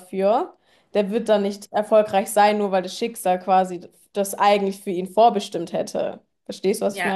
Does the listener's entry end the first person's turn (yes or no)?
yes